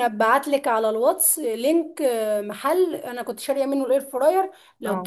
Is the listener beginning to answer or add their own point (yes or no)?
no